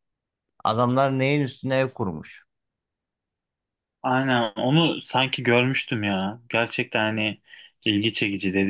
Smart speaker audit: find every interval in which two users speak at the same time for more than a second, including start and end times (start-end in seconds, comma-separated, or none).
none